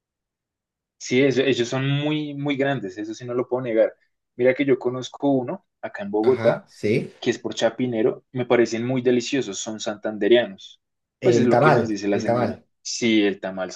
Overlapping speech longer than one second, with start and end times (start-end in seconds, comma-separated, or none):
11.2-12.6